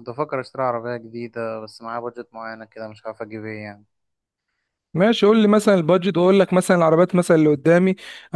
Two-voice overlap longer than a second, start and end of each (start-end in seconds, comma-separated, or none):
none